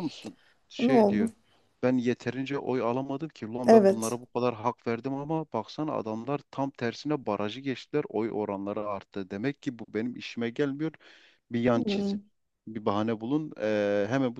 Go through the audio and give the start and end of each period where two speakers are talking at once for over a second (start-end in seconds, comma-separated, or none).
none